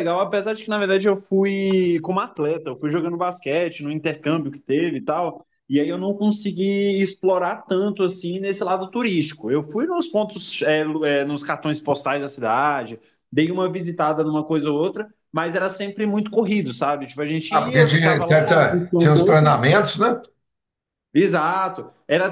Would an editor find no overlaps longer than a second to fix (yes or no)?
no